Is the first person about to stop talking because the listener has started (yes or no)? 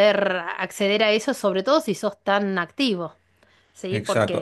yes